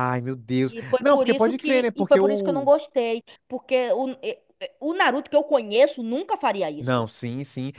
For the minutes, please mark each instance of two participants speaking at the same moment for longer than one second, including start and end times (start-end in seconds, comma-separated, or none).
0.7-2.7